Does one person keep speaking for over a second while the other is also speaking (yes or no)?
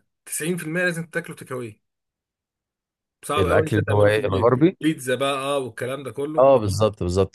yes